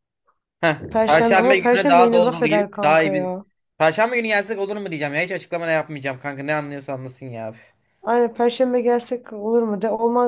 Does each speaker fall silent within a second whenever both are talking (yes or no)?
no